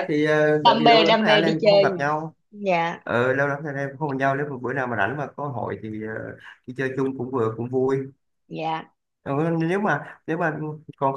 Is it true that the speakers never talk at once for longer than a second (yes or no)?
no